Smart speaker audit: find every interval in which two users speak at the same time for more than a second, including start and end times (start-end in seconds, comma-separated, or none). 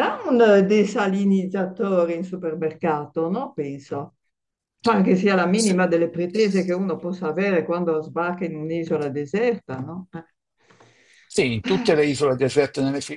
none